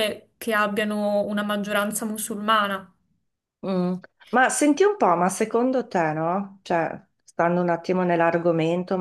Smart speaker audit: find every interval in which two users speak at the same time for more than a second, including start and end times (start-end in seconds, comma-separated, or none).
none